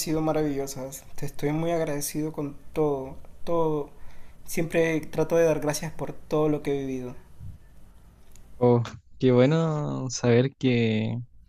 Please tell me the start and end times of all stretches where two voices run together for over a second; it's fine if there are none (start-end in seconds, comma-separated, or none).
none